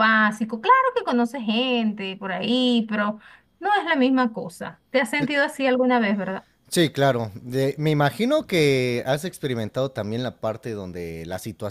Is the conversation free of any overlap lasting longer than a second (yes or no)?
yes